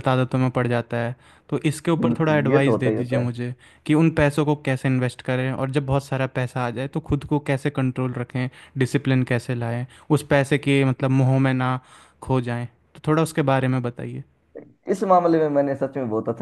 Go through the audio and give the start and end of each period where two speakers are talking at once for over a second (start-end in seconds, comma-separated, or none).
2.0-3.3